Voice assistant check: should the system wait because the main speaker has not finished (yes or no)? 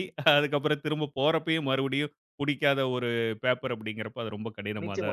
no